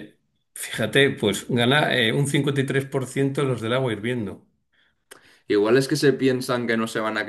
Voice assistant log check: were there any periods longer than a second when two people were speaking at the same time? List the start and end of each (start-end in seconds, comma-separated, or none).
none